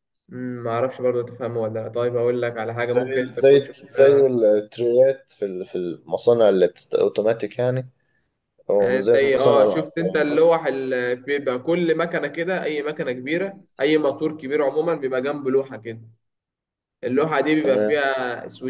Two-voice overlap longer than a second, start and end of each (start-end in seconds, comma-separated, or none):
2.9-4.2, 8.8-10.3